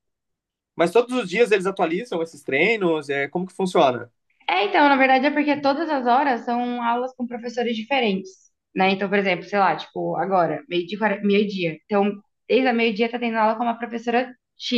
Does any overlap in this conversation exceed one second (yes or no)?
no